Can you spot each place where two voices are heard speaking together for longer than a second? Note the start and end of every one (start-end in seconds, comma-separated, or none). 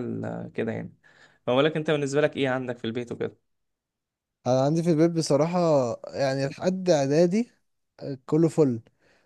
none